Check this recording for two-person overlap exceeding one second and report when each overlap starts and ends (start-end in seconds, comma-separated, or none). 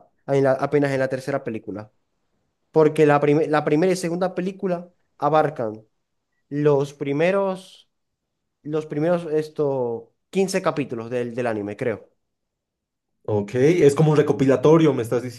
none